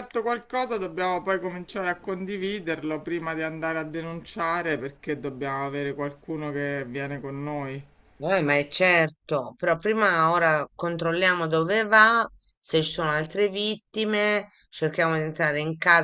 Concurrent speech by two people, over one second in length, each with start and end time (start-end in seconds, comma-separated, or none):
none